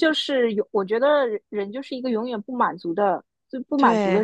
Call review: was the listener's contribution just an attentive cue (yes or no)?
yes